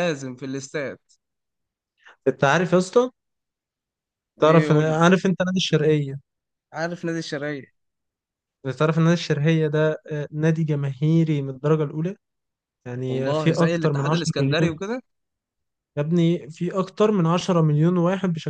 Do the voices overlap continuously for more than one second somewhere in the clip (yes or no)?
yes